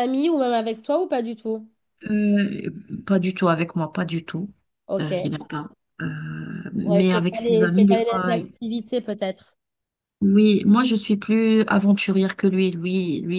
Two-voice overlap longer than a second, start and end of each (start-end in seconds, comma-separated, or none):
6.8-8.5